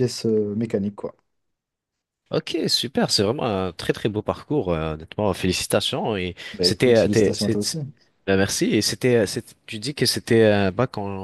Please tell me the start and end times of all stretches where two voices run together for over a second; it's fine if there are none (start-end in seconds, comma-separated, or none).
6.5-7.8